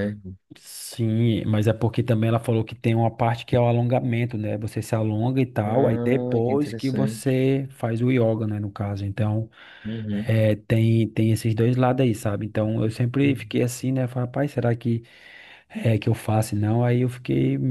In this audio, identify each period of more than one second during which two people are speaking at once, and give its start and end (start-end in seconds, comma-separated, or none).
5.7-7.2